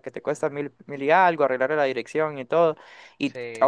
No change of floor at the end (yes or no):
yes